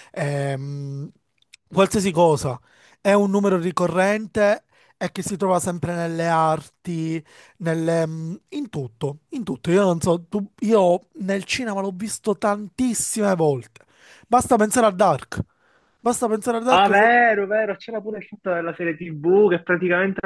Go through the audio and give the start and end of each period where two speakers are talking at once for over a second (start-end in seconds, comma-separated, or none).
none